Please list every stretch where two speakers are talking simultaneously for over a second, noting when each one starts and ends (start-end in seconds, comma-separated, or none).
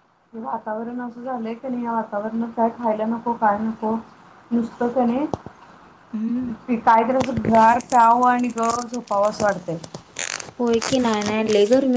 none